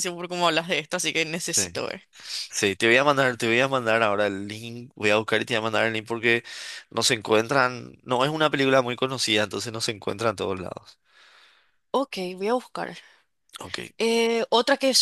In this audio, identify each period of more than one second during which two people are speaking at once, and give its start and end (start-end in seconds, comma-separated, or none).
none